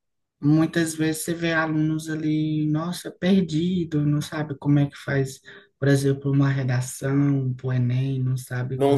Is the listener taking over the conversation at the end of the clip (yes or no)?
yes